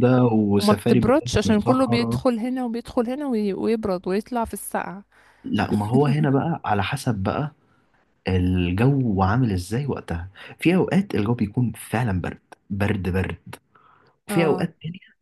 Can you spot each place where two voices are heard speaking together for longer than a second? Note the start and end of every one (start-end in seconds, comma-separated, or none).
0.6-2.2